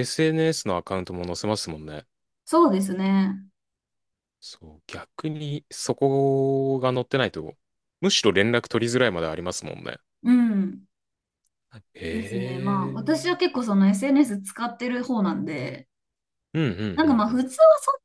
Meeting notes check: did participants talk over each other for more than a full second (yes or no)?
yes